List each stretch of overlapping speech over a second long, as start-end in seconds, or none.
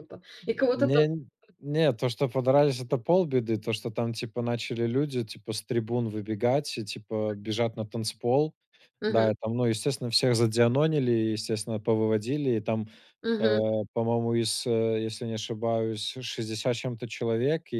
none